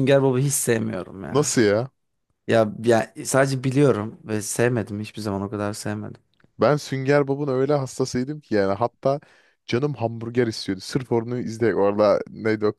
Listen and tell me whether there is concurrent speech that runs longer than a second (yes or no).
no